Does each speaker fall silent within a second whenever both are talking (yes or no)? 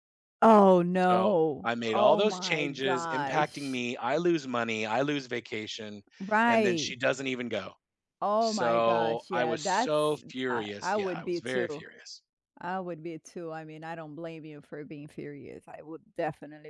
no